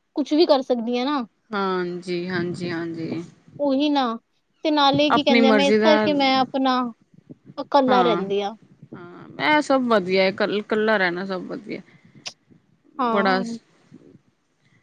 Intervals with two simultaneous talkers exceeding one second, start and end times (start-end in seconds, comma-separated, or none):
none